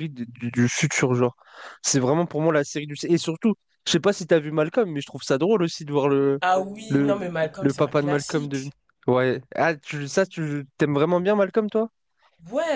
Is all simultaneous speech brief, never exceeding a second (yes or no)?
no